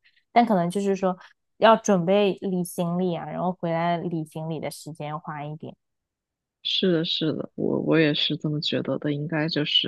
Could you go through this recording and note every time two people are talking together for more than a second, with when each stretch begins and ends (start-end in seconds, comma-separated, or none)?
none